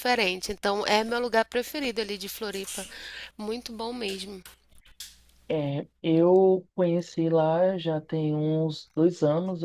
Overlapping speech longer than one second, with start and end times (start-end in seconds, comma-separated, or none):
none